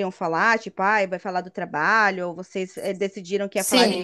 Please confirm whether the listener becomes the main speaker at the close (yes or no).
yes